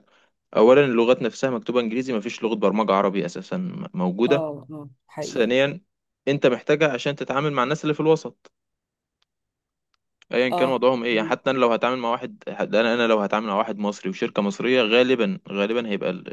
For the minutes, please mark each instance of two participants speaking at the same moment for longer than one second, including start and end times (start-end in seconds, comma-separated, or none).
none